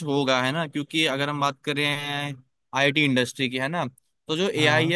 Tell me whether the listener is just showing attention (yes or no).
yes